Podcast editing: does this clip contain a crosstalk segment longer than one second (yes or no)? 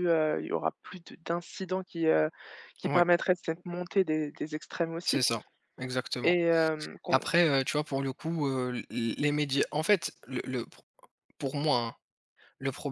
no